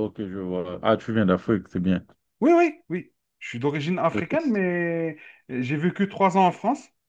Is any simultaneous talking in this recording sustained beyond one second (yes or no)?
no